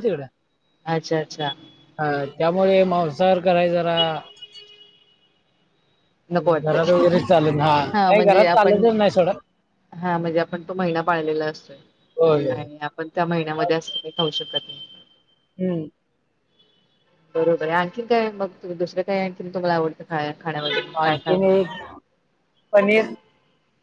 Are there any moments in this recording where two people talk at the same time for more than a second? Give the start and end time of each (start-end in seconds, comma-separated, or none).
6.6-8.8